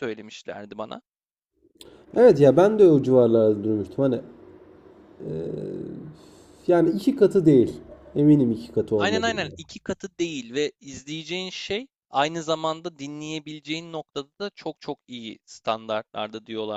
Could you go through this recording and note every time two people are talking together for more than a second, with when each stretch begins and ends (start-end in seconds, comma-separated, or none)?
none